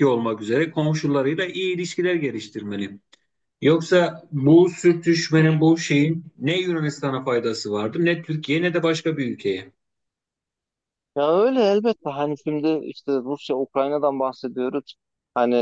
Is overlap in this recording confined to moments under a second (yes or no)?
yes